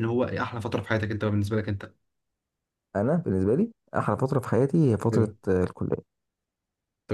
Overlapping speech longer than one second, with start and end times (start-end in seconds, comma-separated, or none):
none